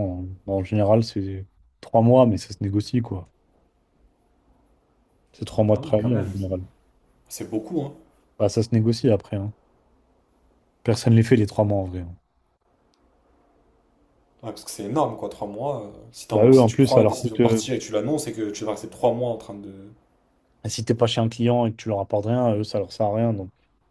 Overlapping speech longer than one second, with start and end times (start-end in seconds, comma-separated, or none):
16.3-17.6